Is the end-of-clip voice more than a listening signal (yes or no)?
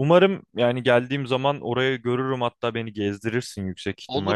yes